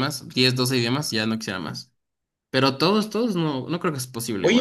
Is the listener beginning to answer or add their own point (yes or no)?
yes